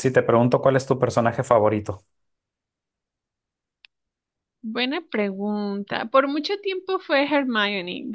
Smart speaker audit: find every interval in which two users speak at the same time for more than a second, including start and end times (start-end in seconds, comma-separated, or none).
none